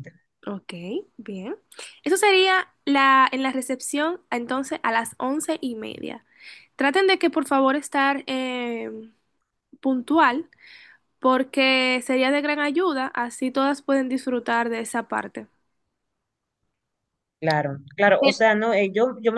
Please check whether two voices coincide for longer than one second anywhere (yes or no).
no